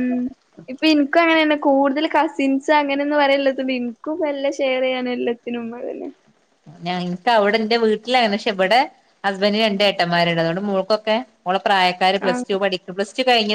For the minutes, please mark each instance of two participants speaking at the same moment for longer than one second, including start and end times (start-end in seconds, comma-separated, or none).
none